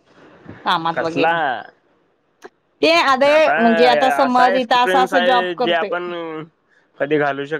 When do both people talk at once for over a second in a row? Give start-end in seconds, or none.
4.2-6.0